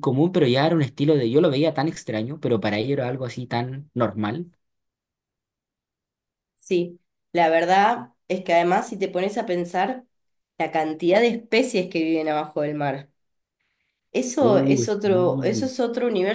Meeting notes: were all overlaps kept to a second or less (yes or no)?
no